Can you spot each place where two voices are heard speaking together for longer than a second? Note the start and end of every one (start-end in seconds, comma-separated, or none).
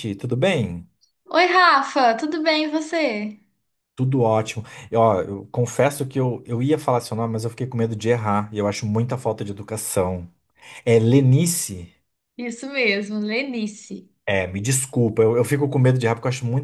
none